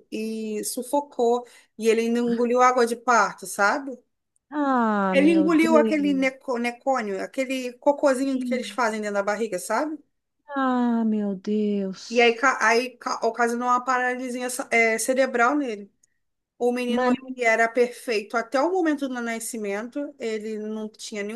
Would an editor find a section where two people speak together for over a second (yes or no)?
yes